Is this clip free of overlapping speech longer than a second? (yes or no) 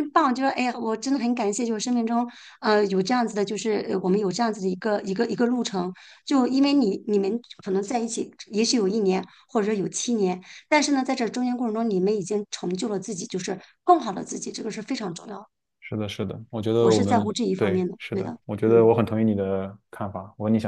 no